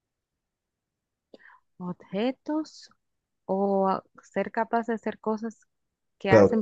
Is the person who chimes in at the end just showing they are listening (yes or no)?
no